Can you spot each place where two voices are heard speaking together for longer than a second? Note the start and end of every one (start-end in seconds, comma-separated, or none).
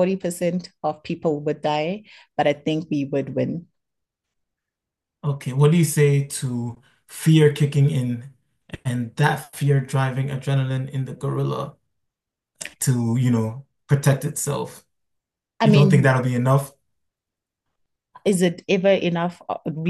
none